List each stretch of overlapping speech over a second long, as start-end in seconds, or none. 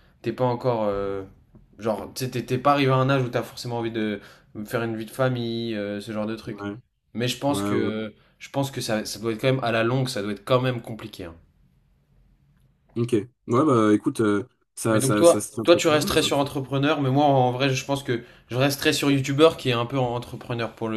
14.9-16.5